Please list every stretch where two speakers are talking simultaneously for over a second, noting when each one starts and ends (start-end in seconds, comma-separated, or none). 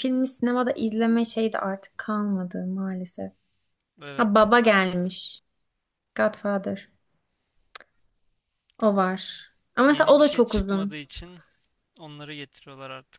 9.8-11.0